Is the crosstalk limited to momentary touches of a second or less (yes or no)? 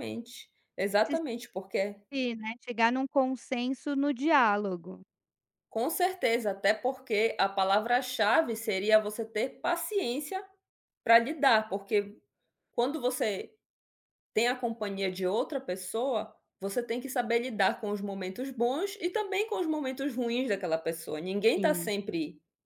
yes